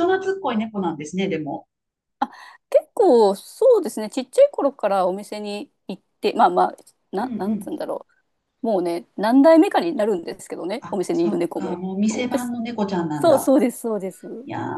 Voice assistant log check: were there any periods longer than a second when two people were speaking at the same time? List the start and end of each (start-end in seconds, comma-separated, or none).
10.8-12.5